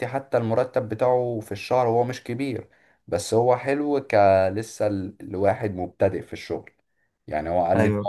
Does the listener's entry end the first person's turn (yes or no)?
no